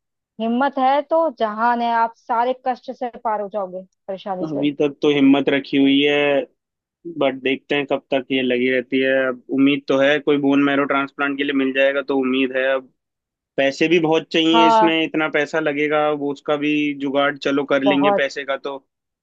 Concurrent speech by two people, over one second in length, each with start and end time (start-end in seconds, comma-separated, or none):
none